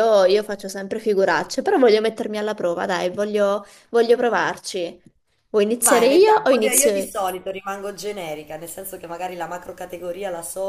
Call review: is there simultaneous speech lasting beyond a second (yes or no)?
yes